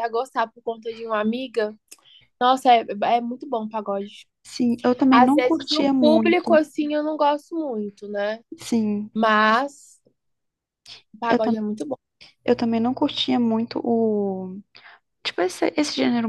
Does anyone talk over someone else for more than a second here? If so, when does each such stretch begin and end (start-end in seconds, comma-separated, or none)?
5.1-6.6